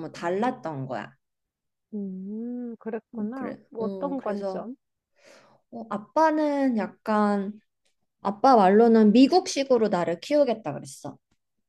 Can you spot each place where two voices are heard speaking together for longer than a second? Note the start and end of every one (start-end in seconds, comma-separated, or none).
3.1-4.7